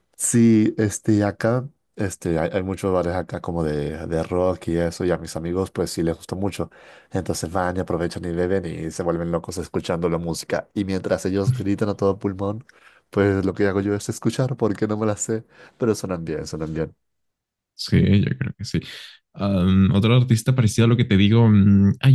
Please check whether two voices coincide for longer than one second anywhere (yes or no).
no